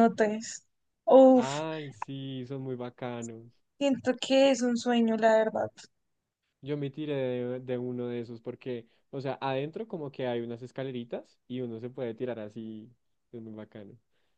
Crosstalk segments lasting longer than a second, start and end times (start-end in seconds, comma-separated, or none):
none